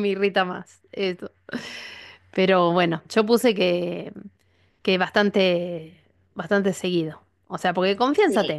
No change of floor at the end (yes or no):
yes